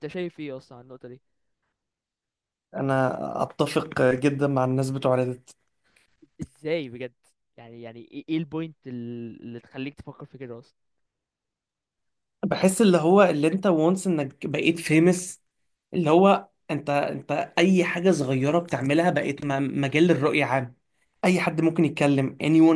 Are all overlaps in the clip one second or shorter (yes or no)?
yes